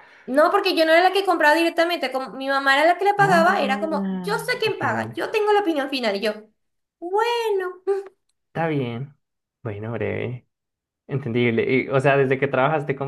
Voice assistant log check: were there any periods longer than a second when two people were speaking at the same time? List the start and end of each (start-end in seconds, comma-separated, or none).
3.2-5.2